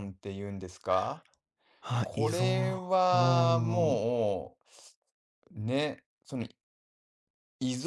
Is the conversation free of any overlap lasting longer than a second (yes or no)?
no